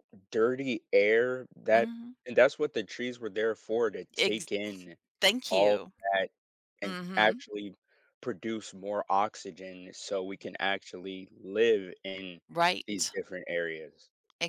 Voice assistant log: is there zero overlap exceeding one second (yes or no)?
yes